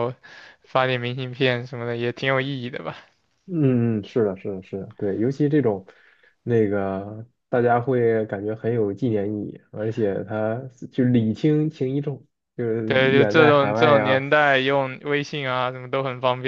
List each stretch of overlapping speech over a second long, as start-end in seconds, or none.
12.9-14.2